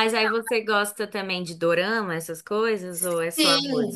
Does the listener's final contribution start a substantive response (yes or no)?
yes